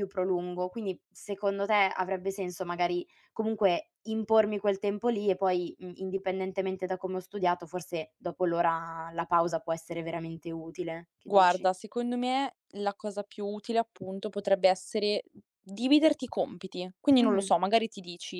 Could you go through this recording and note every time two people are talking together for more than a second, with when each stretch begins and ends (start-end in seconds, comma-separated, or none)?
none